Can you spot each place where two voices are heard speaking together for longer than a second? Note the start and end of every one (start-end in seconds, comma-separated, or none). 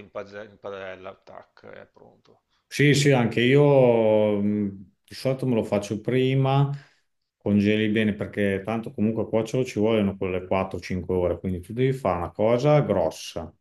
none